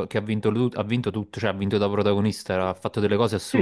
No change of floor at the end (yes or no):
no